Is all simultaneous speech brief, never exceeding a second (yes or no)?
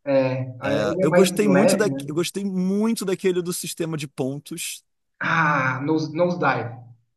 no